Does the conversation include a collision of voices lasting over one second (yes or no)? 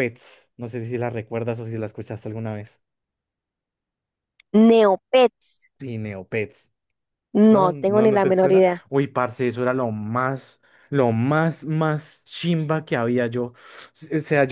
yes